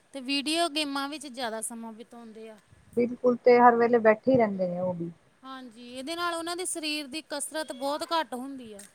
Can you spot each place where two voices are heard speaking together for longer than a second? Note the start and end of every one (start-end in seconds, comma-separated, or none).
none